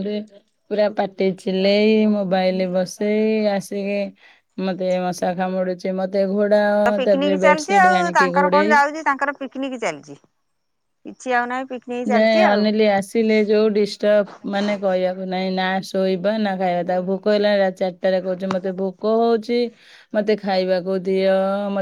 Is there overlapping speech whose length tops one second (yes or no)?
yes